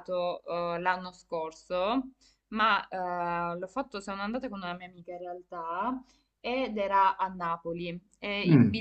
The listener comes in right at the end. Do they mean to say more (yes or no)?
no